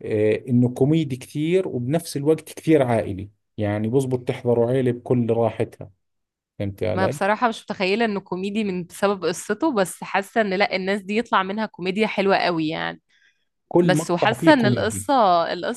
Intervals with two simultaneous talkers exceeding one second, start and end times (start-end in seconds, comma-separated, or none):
13.8-15.1